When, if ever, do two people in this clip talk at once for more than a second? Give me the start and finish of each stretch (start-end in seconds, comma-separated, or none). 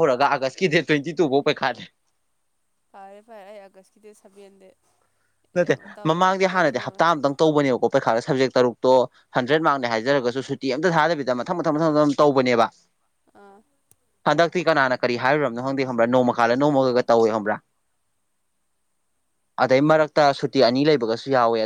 none